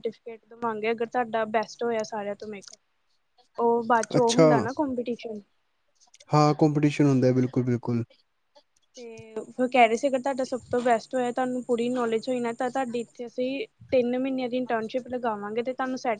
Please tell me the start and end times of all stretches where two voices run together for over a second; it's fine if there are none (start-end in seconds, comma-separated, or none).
none